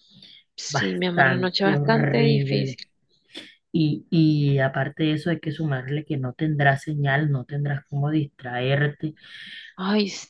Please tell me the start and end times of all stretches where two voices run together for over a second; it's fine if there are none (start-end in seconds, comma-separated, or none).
0.7-2.8